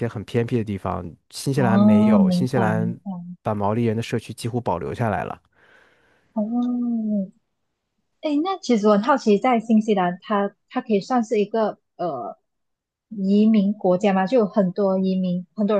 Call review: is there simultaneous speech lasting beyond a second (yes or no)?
yes